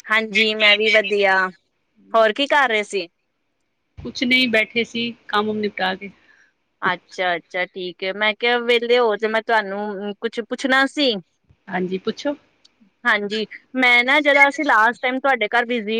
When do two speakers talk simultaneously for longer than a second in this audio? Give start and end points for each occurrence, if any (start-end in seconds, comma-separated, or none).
none